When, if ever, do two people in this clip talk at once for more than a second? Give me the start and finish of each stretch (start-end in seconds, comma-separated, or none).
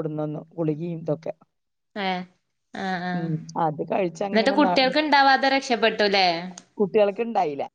none